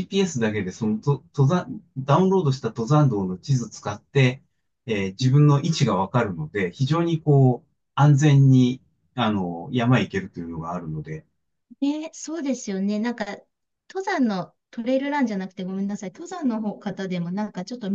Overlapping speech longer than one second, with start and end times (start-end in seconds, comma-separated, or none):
none